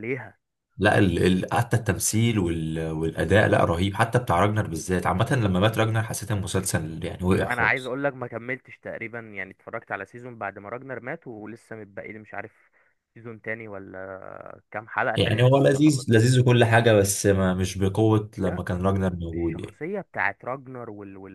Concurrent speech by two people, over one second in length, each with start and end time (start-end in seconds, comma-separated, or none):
15.2-16.4